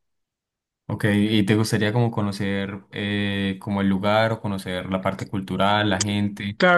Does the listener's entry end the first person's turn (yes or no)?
yes